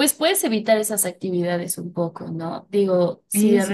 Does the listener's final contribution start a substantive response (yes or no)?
no